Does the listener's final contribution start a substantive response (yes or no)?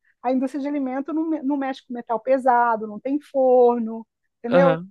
no